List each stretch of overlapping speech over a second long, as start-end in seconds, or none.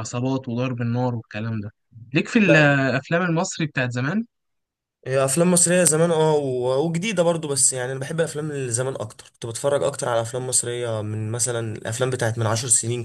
none